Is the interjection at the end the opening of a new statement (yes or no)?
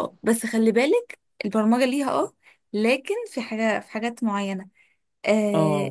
no